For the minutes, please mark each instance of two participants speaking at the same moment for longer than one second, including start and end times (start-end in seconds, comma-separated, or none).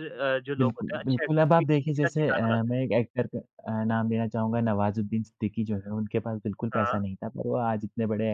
0.6-2.8